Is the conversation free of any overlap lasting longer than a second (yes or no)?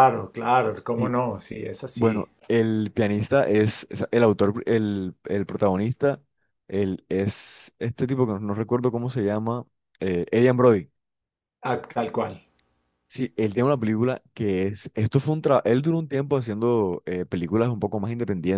yes